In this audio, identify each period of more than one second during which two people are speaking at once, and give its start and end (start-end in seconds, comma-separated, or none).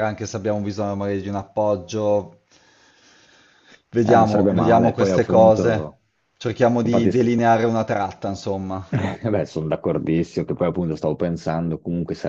4.0-6.0